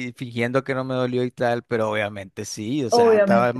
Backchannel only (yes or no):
yes